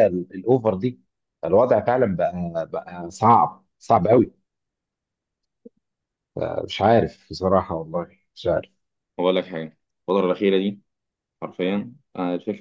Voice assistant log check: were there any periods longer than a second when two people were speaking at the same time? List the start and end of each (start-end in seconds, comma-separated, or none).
none